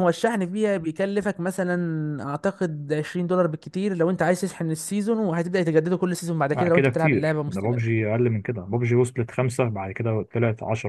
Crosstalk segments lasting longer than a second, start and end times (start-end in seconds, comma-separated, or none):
6.5-8.0